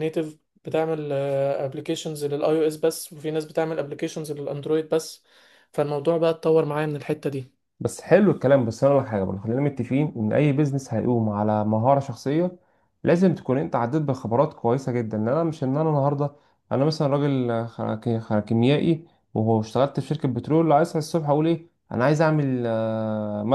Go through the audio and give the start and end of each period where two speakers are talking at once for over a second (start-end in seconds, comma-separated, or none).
none